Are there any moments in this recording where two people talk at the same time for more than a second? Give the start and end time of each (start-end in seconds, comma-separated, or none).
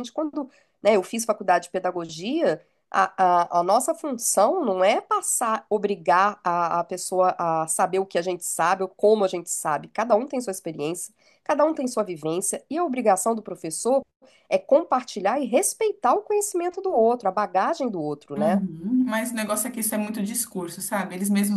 none